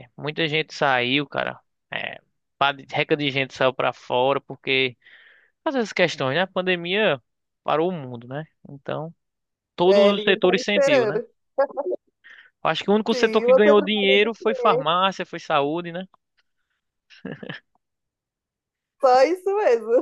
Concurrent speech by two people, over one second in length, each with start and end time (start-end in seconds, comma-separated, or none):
9.8-11.2, 13.1-14.8